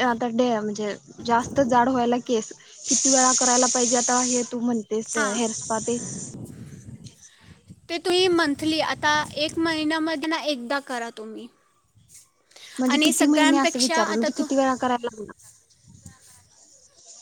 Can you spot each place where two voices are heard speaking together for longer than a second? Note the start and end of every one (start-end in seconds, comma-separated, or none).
12.9-14.4